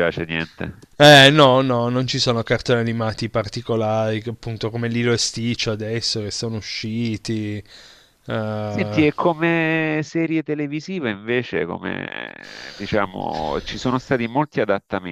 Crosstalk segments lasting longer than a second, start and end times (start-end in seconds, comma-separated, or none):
none